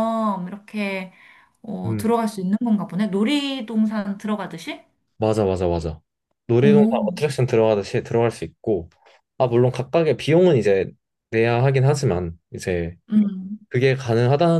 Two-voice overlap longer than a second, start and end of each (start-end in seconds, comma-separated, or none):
none